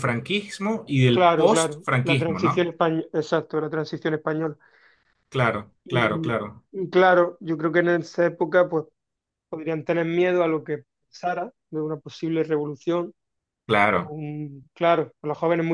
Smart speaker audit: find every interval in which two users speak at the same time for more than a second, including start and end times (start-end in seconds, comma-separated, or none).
1.1-2.7